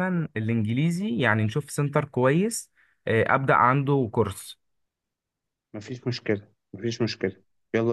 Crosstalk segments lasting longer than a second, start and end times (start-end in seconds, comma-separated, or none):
none